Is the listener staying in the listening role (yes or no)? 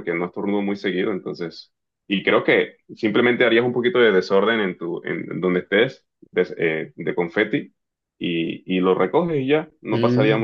no